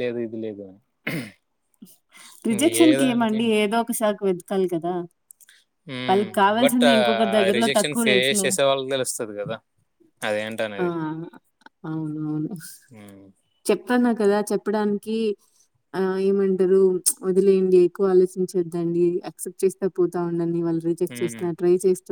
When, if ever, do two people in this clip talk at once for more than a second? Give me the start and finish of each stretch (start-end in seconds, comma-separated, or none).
6.6-8.5